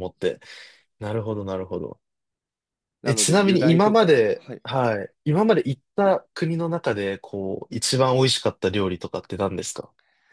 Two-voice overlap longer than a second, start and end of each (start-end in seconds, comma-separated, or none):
3.0-4.6